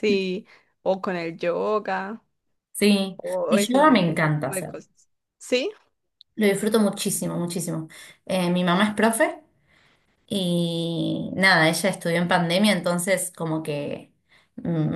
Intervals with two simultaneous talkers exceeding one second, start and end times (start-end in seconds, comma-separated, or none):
3.2-4.7